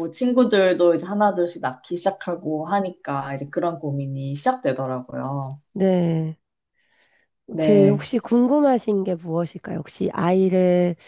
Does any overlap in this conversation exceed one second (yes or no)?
no